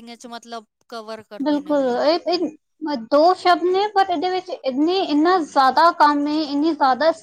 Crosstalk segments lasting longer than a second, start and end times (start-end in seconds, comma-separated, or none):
none